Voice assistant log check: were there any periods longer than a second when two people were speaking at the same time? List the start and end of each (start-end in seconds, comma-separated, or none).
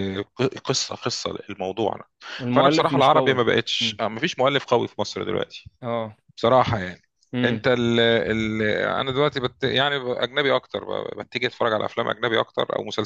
2.5-4.0